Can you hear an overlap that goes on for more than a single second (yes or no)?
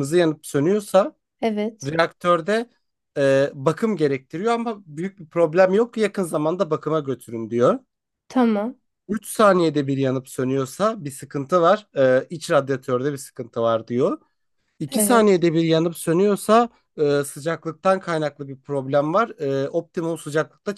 no